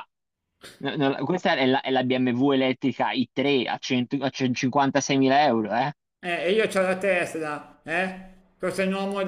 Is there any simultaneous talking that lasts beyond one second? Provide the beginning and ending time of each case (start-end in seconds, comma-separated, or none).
none